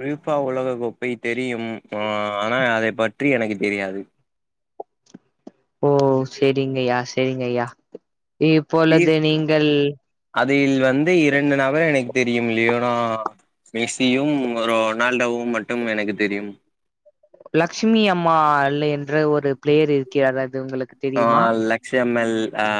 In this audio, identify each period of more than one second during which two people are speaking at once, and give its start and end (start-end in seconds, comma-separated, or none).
none